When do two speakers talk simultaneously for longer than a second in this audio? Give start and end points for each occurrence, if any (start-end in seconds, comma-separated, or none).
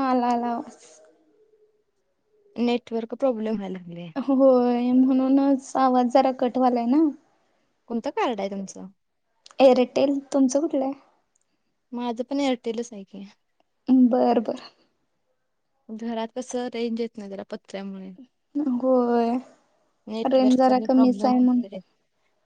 20.3-21.6